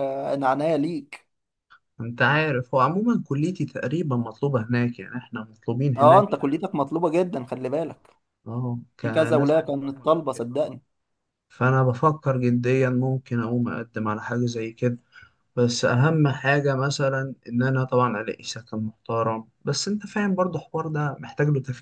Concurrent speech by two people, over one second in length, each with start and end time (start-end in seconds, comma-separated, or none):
9.0-10.5